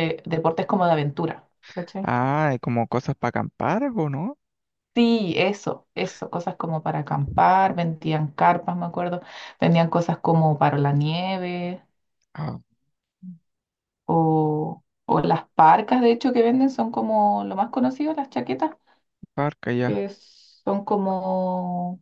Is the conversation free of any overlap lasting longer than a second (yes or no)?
yes